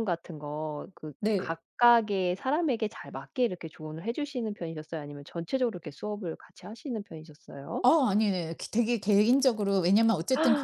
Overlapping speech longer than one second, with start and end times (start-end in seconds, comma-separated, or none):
none